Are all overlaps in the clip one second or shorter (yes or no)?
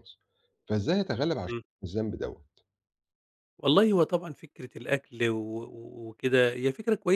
yes